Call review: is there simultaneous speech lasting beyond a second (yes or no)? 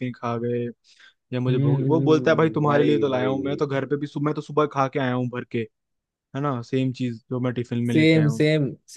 yes